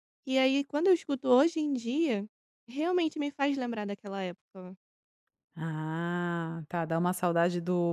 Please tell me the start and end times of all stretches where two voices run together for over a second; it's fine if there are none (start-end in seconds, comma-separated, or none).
none